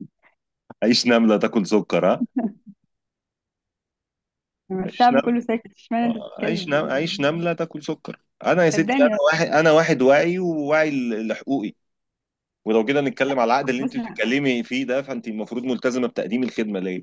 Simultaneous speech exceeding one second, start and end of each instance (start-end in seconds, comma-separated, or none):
6.0-7.3